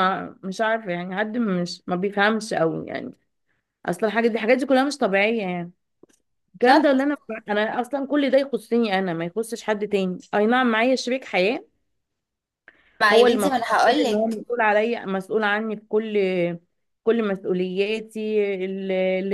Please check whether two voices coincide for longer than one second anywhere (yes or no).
yes